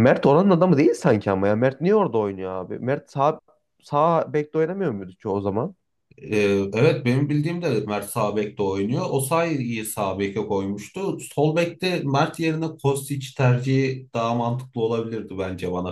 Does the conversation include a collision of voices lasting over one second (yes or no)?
no